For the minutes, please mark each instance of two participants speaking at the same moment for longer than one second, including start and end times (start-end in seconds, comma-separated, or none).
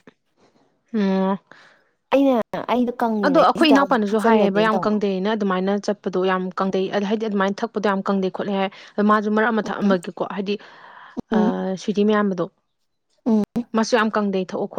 3.2-5.0